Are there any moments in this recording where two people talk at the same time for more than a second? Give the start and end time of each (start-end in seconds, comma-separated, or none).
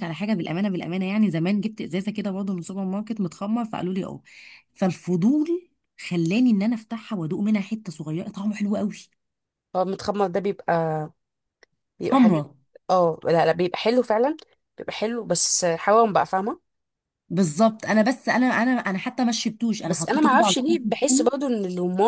19.8-21.3